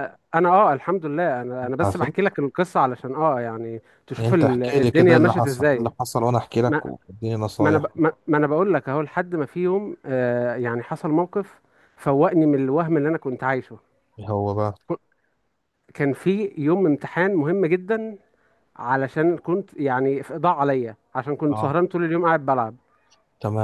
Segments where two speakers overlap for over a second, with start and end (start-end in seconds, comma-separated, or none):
4.2-5.9